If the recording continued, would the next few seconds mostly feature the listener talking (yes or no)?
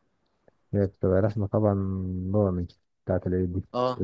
yes